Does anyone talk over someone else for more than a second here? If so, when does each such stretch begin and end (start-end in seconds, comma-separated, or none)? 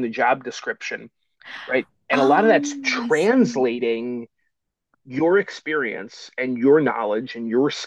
2.1-3.7